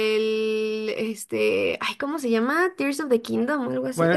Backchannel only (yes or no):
no